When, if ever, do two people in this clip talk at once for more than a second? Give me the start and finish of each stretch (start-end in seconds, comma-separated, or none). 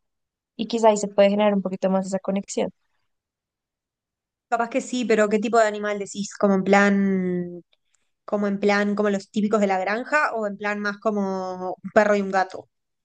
none